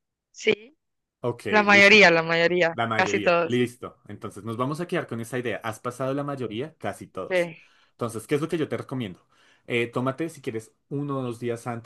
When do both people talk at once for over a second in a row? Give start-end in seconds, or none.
1.5-3.6